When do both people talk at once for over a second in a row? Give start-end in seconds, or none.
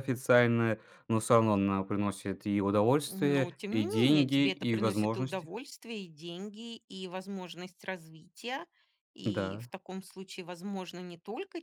3.1-5.5